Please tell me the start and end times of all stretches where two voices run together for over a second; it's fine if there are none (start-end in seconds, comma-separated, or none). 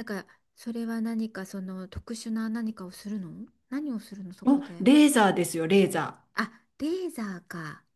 none